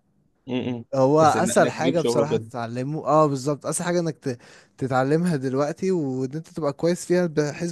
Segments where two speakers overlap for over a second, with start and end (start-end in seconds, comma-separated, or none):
0.9-2.5